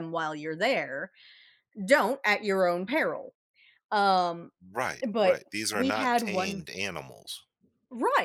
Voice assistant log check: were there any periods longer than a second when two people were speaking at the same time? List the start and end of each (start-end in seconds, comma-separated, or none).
5.1-6.6